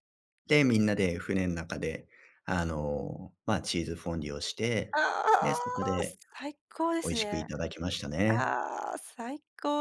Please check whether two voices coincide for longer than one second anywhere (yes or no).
no